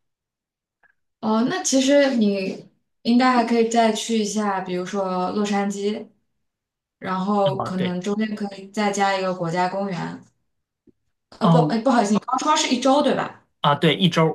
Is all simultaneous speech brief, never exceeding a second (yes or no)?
yes